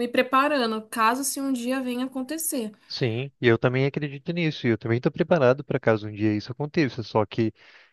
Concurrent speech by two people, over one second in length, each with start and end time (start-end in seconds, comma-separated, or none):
none